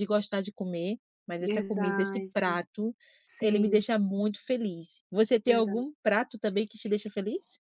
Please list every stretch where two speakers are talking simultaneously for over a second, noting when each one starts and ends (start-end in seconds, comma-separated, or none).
1.4-2.6